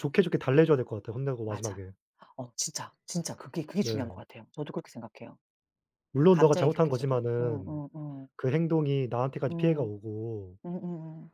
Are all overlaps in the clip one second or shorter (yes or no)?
no